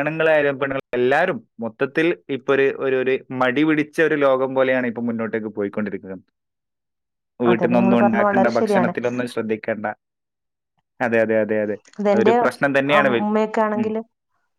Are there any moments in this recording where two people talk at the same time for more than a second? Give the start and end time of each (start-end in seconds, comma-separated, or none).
7.5-8.9